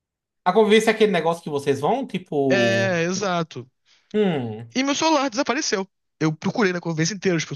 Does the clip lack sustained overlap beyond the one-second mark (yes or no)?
yes